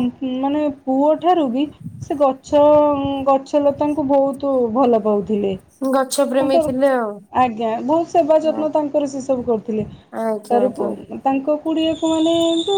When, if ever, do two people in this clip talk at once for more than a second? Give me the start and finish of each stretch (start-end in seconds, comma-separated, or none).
none